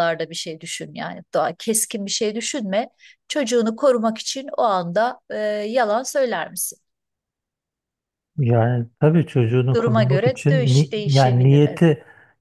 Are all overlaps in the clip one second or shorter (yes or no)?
no